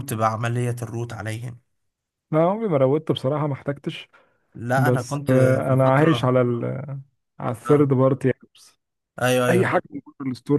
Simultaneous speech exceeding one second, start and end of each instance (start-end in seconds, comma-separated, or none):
4.8-6.3